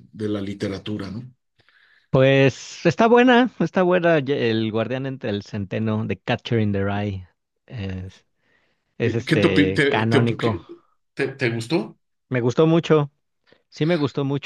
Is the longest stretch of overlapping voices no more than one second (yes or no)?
no